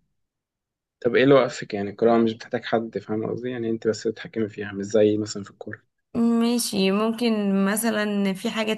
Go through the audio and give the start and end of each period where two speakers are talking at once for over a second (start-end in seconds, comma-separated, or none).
none